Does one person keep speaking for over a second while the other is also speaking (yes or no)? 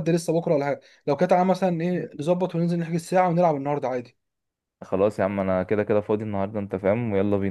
no